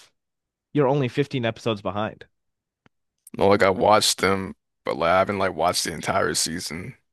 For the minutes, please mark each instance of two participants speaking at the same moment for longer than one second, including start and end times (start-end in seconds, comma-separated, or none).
none